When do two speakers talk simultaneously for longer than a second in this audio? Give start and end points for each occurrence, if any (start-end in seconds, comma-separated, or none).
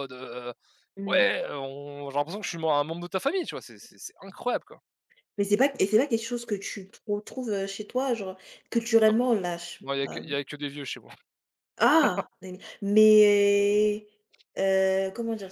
none